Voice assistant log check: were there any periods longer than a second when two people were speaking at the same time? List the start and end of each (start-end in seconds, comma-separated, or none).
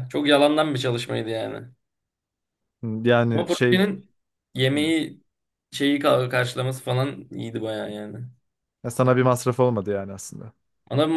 none